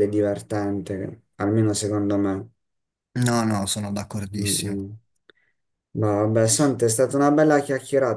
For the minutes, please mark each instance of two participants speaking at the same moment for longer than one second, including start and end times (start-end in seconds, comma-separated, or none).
none